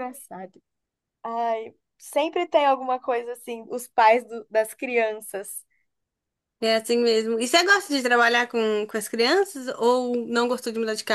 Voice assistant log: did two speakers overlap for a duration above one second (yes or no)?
no